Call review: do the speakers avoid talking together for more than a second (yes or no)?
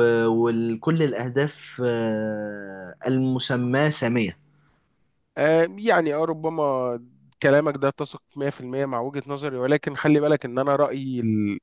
yes